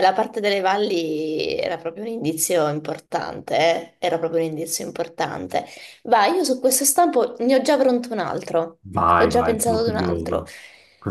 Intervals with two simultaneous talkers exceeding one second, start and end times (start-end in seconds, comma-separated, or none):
9.2-10.5